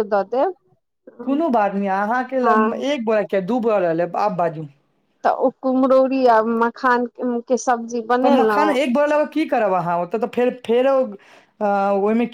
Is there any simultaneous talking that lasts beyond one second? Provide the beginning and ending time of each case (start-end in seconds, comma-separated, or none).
none